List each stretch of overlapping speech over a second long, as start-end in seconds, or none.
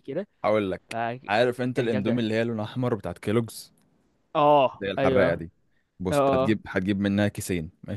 none